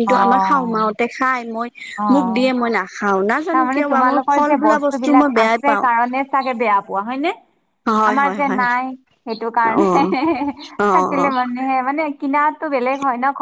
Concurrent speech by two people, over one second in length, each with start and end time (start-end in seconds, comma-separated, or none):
3.5-5.9